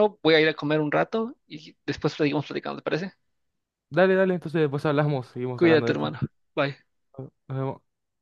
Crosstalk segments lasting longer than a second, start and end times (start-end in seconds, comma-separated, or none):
none